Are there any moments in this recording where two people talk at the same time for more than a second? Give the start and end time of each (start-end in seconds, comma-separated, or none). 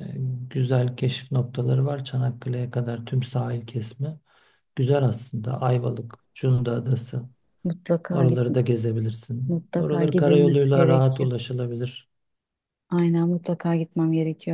9.5-11.3